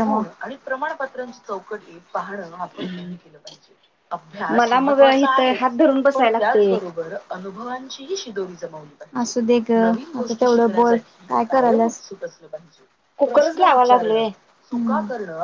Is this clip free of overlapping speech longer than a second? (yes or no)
no